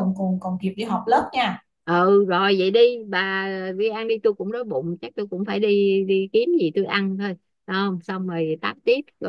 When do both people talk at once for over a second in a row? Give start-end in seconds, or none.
none